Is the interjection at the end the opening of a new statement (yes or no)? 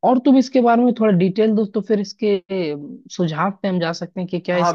yes